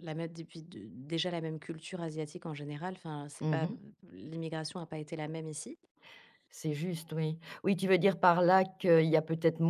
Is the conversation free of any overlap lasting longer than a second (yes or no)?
yes